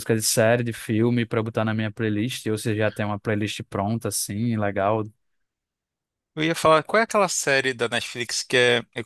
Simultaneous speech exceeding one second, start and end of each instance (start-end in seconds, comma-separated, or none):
none